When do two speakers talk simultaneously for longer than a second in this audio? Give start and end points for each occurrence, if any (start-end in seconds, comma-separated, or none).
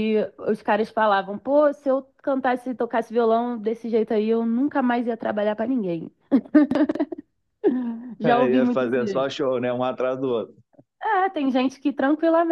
8.2-9.4